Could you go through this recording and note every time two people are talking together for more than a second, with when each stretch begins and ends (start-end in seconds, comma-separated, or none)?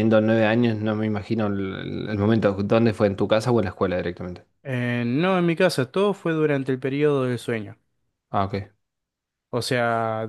none